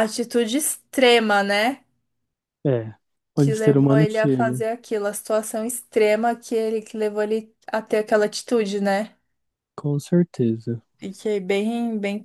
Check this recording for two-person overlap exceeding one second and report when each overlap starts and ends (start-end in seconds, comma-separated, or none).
3.4-4.6